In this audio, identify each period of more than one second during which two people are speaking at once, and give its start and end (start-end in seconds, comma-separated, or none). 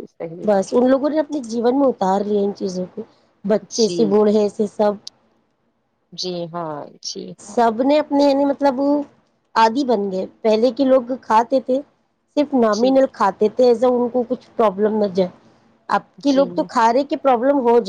none